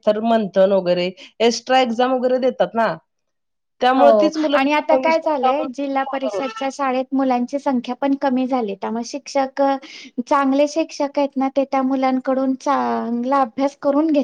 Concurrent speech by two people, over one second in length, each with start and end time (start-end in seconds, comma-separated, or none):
4.0-6.3